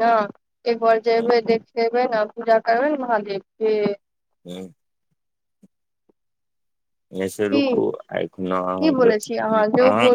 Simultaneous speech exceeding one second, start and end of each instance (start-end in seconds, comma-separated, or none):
7.5-9.1